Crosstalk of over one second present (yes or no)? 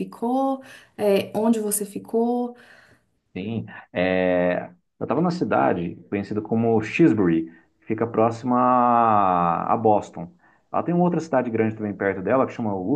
no